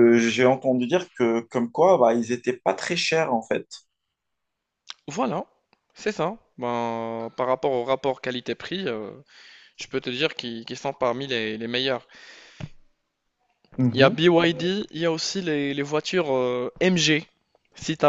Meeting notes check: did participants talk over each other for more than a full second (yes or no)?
no